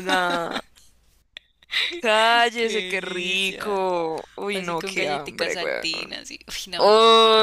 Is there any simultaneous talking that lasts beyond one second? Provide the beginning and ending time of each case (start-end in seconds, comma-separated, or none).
2.6-3.8, 4.5-5.8